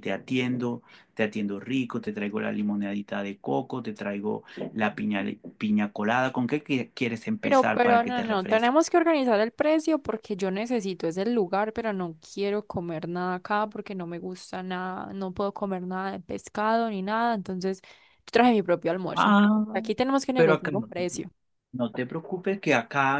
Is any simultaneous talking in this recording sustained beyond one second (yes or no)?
yes